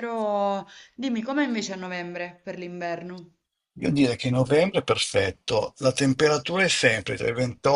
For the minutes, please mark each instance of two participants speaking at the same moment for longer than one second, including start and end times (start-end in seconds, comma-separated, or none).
none